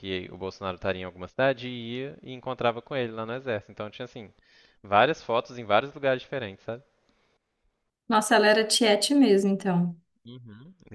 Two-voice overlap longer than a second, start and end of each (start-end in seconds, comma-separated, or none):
none